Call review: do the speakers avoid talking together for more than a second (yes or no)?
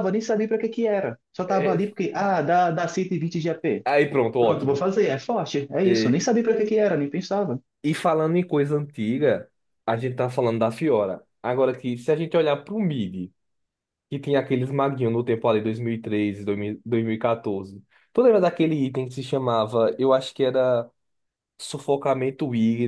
yes